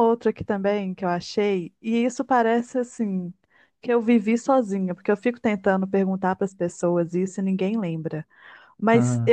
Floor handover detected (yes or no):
no